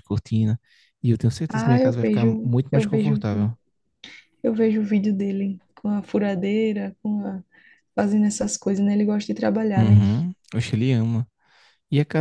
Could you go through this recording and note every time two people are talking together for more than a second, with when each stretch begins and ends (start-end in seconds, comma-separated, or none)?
1.5-3.5